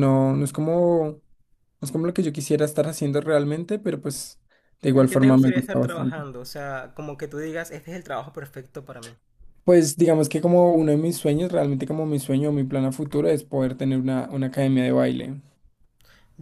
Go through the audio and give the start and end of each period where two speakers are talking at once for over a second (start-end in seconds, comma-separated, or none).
4.9-6.3